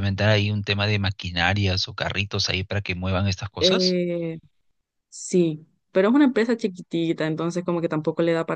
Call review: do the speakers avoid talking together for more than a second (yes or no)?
yes